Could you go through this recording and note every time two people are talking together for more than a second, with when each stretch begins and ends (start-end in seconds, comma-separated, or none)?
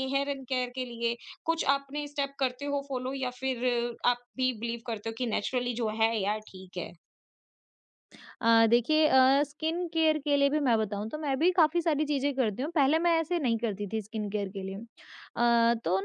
none